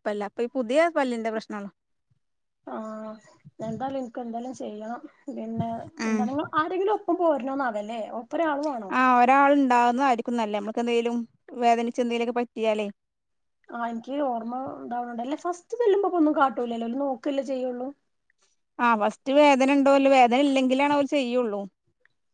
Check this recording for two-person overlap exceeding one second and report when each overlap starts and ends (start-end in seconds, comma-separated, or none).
none